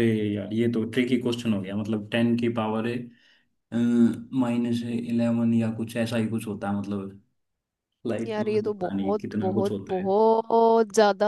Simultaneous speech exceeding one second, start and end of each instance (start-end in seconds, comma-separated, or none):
8.3-10.1